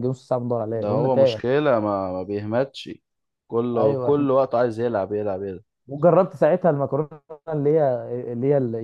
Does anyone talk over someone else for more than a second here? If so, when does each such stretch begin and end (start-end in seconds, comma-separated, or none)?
none